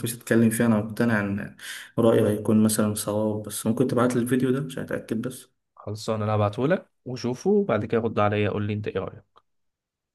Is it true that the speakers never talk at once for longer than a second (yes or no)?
yes